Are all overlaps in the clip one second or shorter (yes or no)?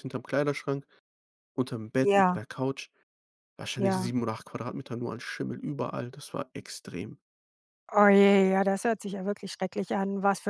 yes